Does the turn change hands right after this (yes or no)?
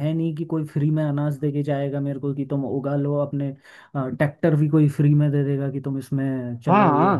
yes